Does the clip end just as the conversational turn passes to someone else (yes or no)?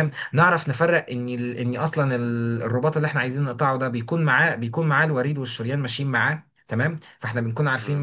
no